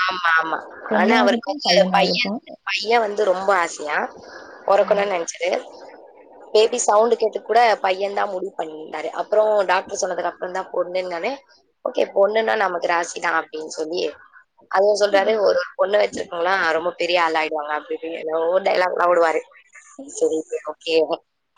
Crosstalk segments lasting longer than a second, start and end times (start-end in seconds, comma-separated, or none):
1.0-2.3